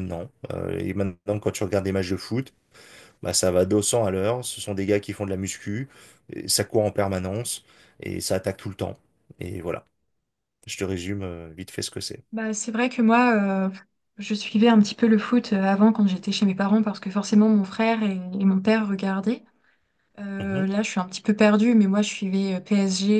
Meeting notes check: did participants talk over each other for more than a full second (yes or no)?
no